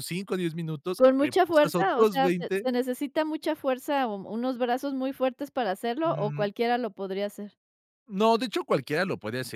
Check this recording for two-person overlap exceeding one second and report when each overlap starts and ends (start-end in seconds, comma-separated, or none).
1.0-2.6